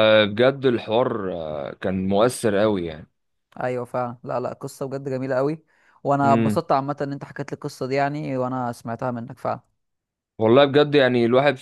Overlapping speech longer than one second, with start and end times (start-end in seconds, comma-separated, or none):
none